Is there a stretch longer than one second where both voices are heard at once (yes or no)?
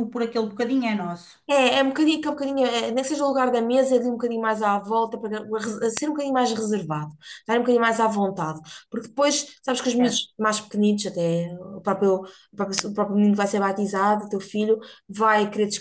no